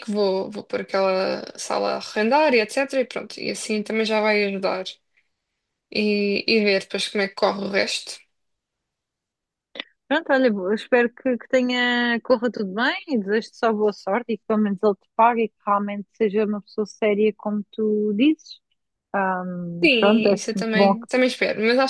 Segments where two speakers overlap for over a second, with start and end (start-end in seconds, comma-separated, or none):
19.8-21.1